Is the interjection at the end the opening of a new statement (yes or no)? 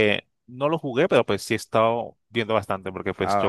no